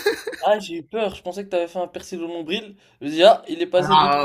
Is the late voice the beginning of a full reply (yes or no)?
yes